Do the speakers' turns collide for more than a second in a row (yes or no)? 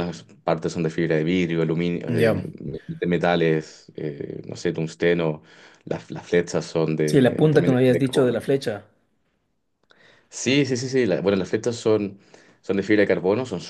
yes